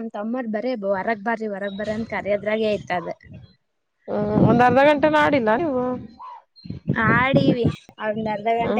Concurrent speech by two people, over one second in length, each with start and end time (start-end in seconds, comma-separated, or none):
none